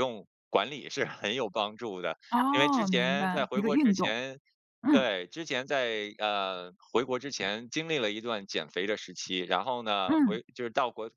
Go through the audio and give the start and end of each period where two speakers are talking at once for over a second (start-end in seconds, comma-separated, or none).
2.3-4.2